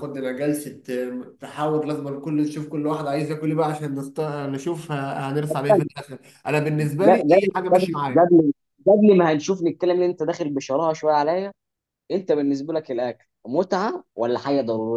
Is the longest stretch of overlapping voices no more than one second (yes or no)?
yes